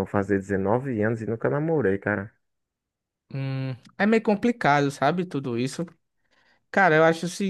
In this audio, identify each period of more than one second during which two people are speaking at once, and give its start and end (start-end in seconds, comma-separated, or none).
none